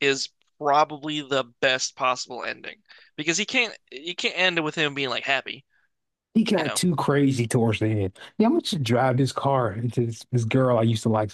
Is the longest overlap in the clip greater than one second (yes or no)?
no